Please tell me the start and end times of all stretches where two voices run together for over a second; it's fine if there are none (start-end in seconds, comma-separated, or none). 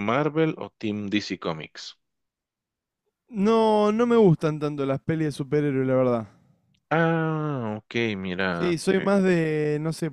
none